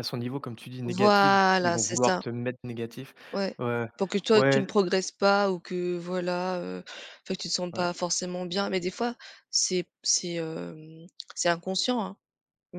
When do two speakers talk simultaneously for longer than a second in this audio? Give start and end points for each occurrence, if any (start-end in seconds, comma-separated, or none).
0.8-2.2